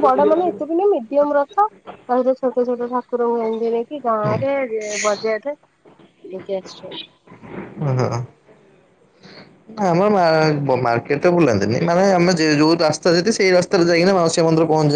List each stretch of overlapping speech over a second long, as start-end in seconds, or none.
none